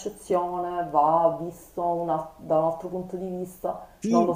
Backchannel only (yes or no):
no